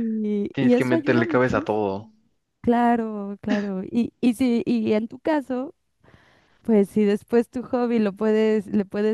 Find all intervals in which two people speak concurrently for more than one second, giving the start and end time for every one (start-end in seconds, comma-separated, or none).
0.5-2.1